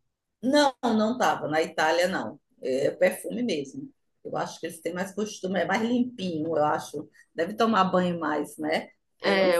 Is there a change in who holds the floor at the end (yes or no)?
yes